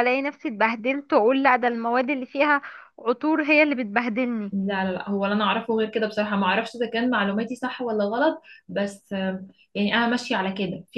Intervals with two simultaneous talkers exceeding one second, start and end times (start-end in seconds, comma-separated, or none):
none